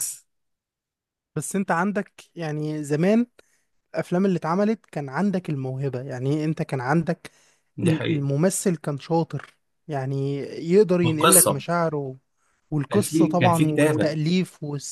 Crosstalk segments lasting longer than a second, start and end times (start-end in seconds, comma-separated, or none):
12.9-14.1